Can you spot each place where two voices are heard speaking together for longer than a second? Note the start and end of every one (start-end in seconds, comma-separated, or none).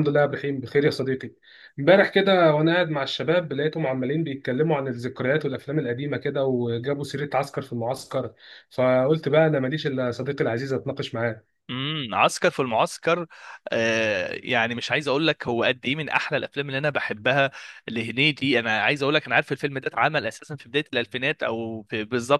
none